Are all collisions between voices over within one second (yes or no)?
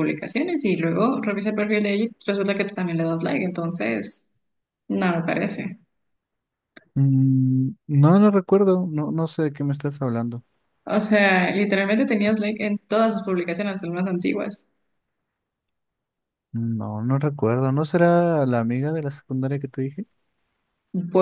yes